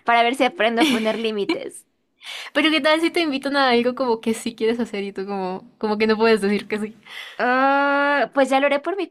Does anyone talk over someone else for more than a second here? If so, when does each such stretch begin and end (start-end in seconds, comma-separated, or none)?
none